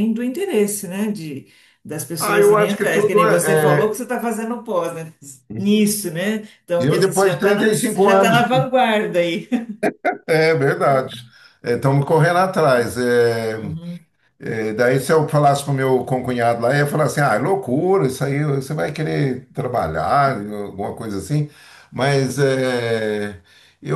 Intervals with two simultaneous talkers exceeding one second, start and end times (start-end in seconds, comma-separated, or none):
2.2-4.0, 6.8-8.5